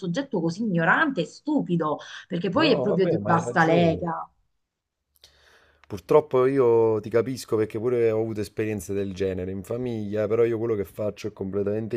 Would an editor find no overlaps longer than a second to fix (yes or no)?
no